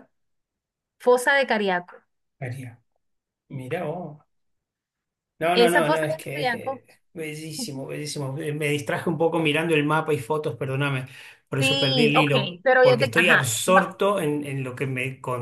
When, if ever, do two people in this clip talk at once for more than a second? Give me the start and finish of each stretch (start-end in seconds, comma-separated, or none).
5.5-6.8, 11.6-14.0